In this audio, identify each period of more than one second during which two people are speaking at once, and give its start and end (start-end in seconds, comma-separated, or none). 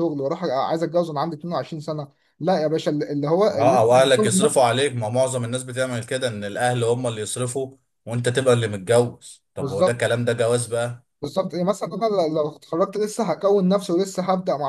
none